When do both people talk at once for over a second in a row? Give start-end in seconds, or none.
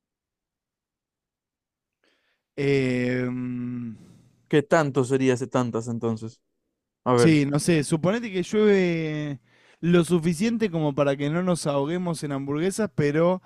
none